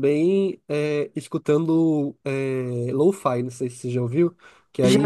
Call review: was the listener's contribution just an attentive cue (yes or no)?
yes